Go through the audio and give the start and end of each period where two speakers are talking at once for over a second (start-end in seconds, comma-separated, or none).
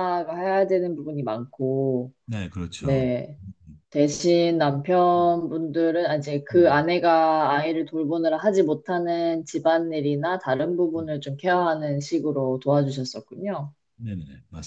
none